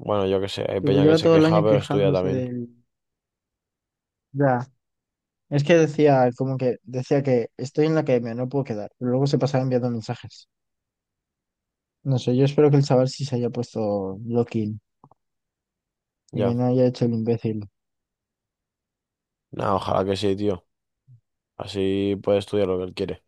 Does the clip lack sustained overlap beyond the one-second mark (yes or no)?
no